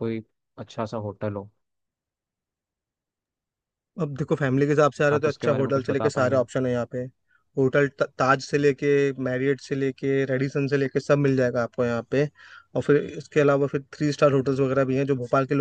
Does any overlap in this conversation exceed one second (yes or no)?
yes